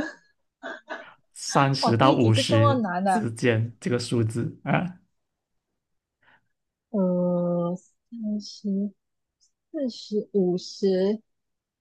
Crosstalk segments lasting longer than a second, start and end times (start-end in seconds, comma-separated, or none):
1.8-3.3